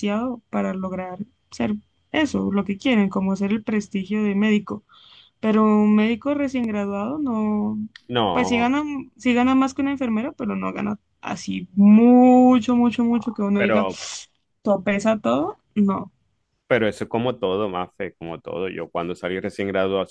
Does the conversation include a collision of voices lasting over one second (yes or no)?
no